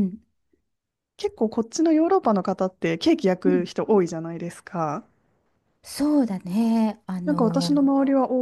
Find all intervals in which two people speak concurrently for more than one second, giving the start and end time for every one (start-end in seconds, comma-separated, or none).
none